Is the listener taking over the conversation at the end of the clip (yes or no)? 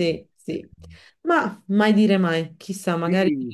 yes